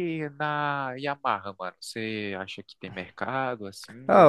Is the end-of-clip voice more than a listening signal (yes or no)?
yes